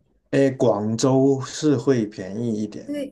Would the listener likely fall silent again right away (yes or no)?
no